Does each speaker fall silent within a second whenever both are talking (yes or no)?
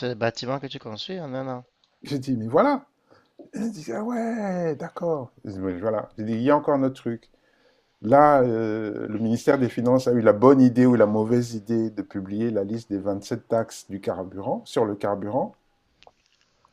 yes